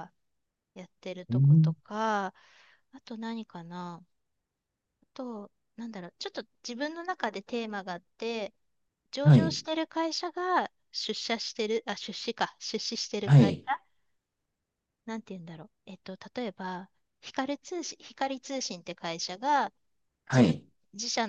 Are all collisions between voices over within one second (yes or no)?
yes